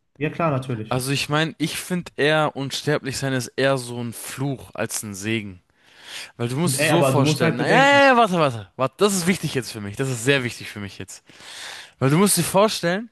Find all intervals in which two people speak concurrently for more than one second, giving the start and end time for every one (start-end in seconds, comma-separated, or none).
6.8-8.1